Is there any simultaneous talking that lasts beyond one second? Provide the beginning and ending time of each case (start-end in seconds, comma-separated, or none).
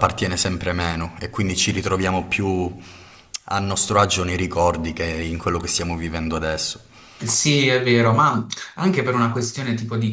none